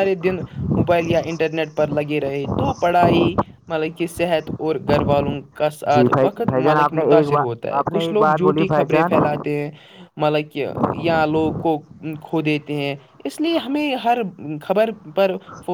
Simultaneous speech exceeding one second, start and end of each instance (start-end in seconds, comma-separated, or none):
5.9-9.1